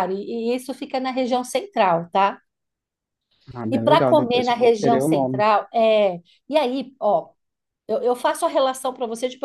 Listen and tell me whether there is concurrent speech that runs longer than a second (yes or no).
yes